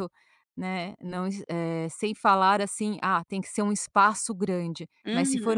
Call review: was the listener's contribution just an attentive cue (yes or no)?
yes